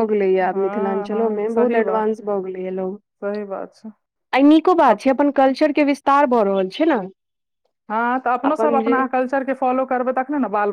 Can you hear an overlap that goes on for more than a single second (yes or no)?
yes